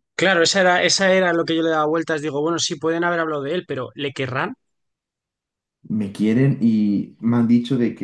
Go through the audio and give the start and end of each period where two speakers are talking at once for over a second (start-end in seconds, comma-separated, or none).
none